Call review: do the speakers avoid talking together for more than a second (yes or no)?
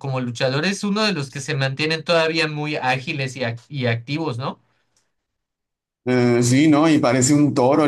yes